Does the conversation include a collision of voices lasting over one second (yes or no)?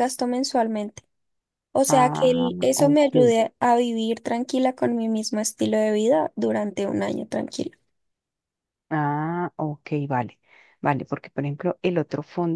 yes